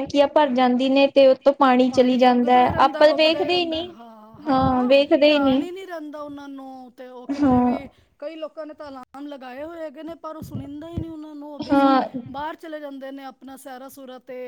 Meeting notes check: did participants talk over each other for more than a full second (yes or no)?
yes